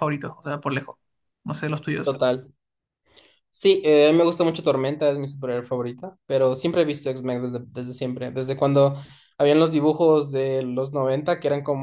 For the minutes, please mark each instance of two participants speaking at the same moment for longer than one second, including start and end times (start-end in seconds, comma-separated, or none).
none